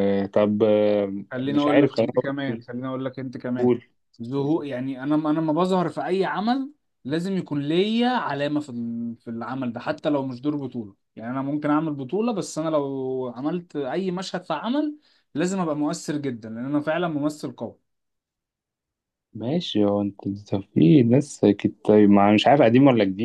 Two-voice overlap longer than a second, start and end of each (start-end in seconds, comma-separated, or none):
1.3-2.6